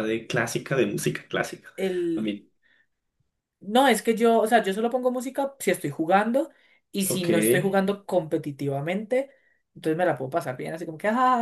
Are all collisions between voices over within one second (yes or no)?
yes